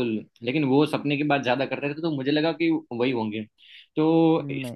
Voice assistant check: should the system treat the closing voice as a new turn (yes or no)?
no